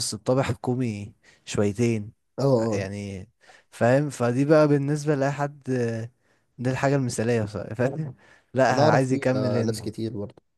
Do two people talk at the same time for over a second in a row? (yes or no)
yes